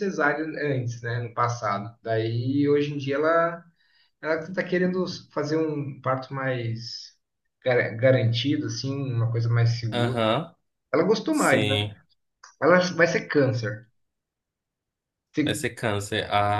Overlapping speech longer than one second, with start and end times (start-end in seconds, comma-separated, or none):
none